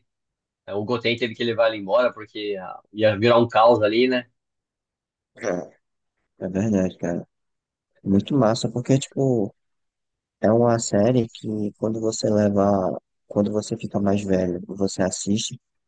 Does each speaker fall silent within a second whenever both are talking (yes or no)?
yes